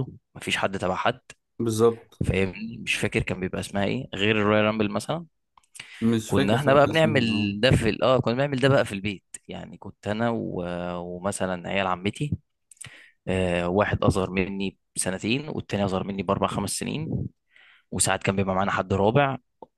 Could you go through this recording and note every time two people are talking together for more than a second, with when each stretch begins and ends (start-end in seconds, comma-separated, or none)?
6.2-7.5